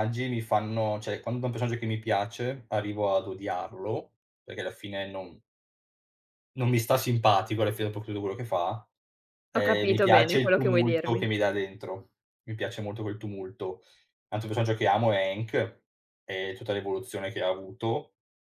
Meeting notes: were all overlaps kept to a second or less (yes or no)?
no